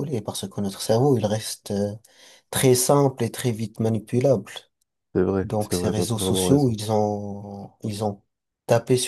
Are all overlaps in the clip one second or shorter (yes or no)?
no